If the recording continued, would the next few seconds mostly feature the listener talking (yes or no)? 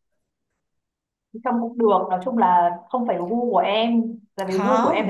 yes